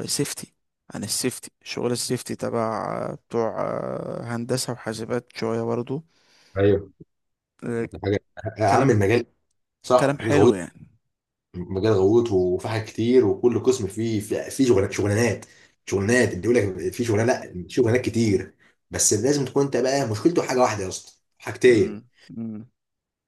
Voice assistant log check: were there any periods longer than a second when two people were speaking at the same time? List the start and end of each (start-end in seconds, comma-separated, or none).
none